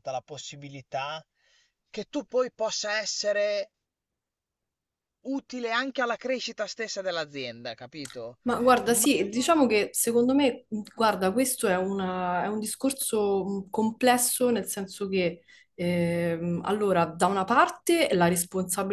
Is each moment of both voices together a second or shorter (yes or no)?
yes